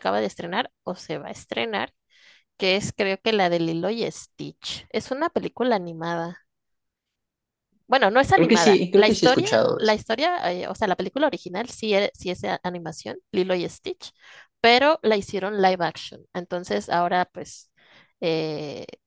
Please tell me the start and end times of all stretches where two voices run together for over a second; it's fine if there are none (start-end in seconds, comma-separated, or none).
8.3-10.0